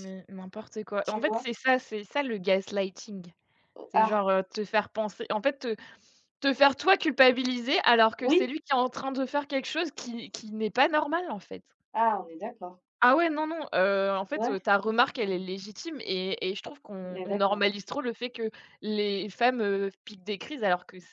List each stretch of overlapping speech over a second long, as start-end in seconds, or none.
none